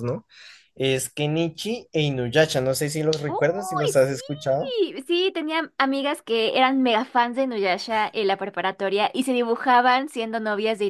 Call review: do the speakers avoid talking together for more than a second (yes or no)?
no